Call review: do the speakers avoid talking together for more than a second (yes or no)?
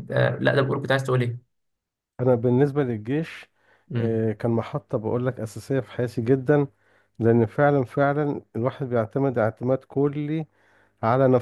yes